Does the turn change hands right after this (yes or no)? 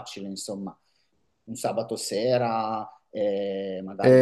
yes